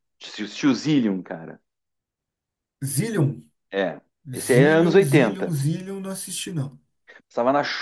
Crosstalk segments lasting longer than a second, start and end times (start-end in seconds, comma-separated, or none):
4.3-5.5